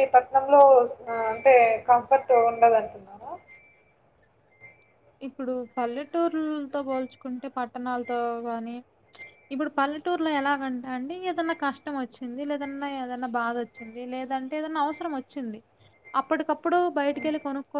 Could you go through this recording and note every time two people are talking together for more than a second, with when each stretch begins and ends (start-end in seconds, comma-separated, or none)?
none